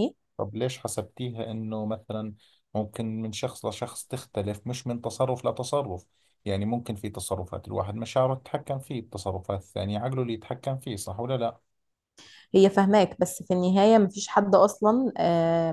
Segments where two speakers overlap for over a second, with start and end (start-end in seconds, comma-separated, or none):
none